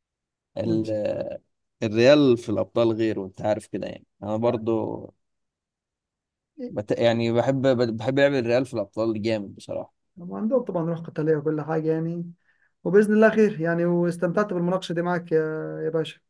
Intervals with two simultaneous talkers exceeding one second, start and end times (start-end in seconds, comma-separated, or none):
none